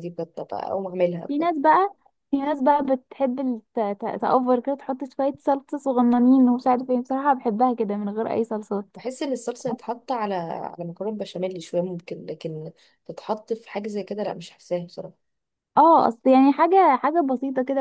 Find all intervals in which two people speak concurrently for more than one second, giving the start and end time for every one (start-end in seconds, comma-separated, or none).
none